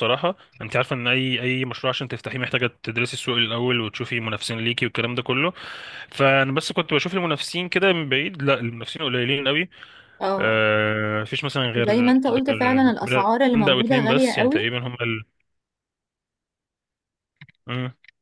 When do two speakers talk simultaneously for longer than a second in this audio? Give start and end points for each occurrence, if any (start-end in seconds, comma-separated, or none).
11.8-14.6